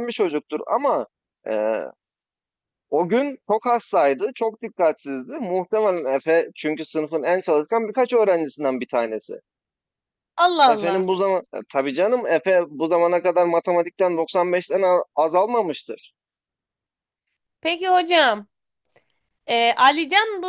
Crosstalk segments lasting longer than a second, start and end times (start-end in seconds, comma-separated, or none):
none